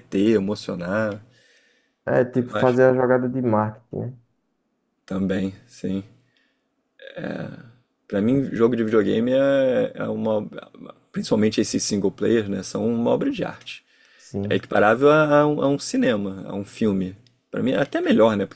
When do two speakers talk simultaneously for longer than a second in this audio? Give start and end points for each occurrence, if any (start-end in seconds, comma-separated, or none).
none